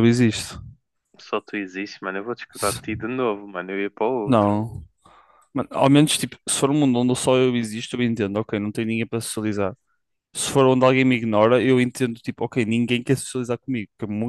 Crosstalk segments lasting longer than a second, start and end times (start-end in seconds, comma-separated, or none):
none